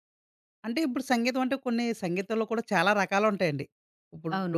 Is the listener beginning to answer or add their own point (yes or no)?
no